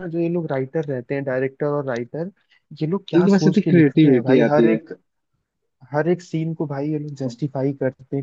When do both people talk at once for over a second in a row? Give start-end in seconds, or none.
3.2-4.8